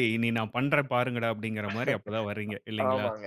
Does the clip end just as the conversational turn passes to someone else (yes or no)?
yes